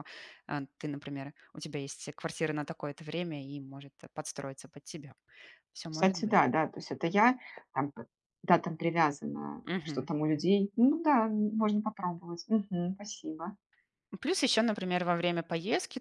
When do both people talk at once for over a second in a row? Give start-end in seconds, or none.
none